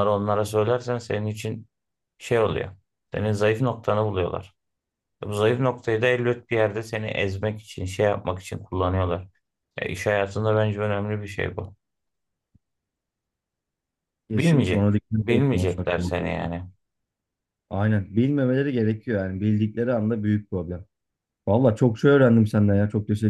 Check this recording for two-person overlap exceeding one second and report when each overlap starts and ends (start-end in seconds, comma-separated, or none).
14.3-16.5